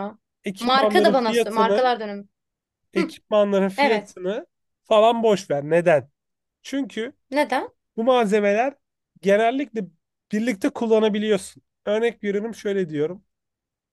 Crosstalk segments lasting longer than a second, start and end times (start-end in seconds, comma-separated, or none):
0.6-1.9